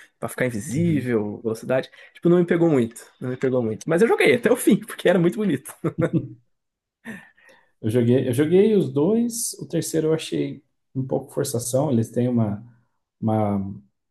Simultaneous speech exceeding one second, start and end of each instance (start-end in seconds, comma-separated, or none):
none